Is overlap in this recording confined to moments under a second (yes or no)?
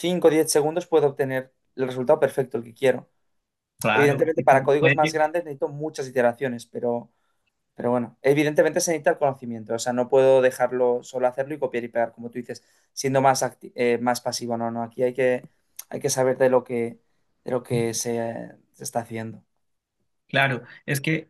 no